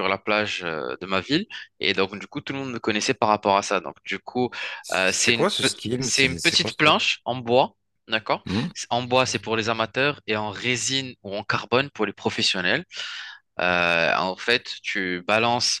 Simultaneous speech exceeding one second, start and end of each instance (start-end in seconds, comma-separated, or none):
4.9-7.0